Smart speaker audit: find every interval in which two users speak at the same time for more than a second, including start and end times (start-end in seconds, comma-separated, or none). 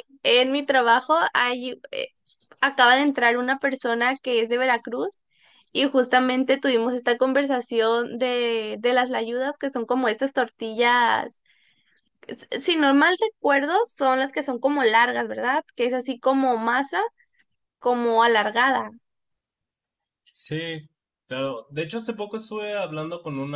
none